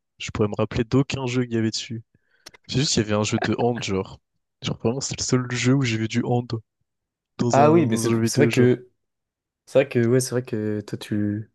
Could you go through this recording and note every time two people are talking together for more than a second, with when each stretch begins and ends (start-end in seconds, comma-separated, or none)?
7.5-8.7